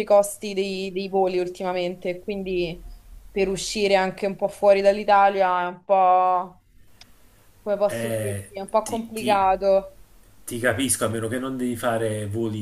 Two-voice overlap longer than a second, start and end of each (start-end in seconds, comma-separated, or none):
7.8-9.4